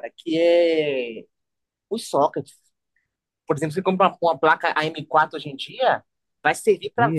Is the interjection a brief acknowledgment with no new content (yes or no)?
yes